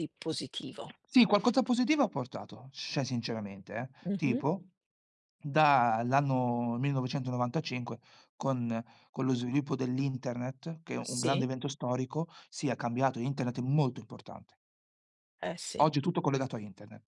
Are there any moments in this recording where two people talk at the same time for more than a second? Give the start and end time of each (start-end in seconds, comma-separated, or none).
none